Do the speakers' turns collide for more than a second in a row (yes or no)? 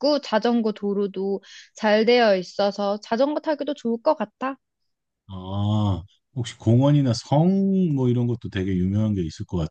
no